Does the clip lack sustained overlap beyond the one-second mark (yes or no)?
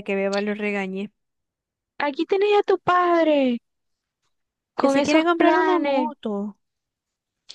no